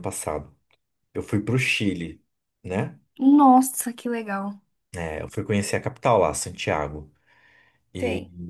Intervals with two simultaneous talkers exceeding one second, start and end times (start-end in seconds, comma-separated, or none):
none